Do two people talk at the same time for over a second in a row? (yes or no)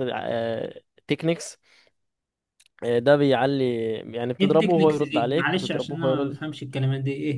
yes